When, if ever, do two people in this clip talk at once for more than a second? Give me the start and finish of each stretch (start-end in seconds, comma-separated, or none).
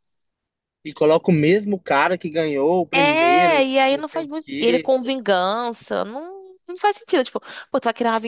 2.9-4.9